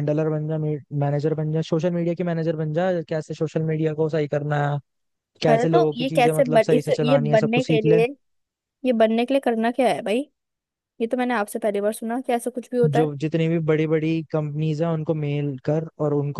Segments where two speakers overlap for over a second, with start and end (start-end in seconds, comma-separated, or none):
5.5-8.0